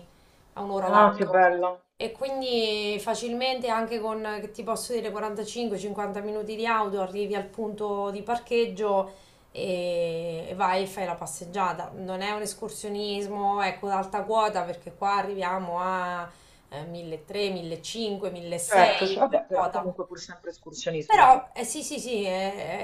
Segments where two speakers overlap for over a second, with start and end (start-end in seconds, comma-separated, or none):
18.7-19.9